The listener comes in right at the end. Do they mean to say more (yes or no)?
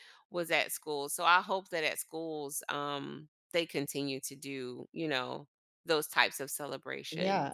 yes